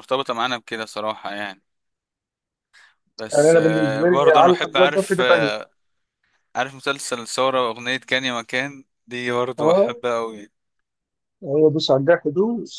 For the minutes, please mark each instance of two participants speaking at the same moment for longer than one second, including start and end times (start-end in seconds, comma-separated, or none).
3.3-5.5